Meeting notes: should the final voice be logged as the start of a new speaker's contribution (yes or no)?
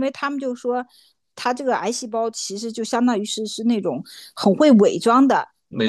no